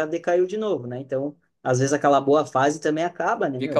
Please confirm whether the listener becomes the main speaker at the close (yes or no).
yes